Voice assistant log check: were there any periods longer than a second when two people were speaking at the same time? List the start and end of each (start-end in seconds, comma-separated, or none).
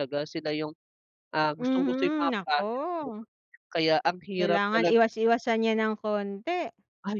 1.6-3.1